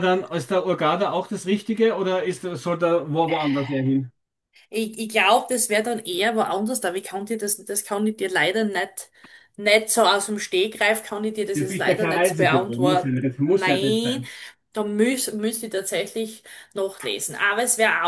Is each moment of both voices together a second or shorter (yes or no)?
no